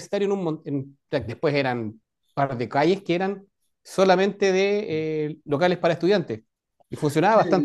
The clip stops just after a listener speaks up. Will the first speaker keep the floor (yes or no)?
no